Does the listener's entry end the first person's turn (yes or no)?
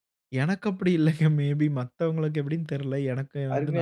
yes